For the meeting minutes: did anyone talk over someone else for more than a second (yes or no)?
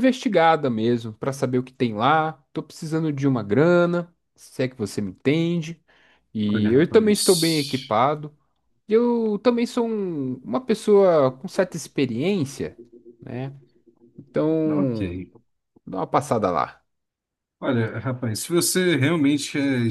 yes